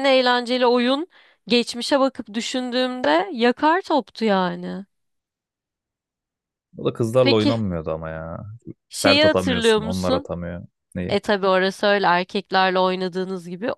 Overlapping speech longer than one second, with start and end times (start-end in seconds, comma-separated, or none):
8.9-10.3